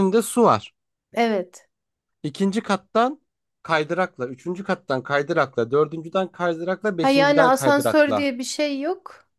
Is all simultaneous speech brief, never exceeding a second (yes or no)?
no